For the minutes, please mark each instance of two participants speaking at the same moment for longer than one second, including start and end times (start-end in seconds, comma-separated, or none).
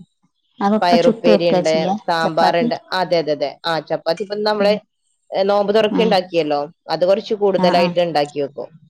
0.8-2.7